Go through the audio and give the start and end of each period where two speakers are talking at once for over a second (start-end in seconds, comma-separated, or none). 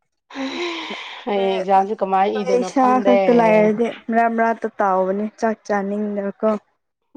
1.3-3.2